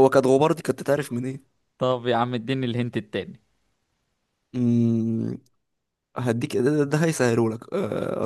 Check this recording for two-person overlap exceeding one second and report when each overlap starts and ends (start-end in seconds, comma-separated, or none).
none